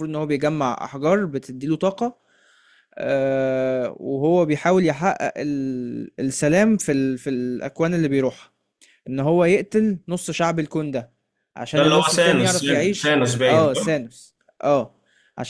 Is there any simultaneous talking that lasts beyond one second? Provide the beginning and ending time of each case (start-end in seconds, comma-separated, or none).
11.8-14.0